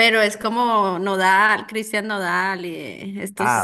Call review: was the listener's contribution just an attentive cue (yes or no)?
no